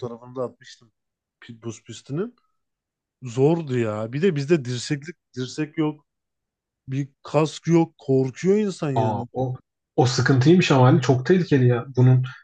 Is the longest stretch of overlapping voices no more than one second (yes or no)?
yes